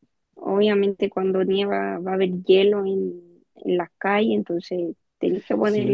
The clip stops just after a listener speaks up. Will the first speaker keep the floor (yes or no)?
no